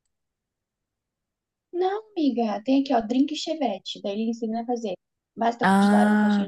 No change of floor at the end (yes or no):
yes